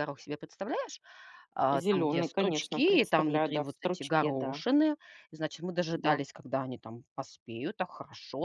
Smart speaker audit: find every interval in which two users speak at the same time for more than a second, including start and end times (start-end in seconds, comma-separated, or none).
1.7-4.6